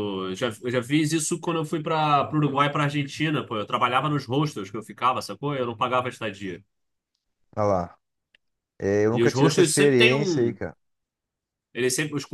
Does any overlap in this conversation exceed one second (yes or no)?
yes